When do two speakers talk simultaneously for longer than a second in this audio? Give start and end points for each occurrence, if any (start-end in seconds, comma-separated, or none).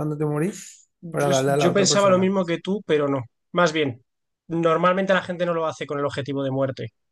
1.0-2.3